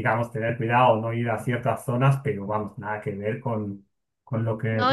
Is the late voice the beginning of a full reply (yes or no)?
yes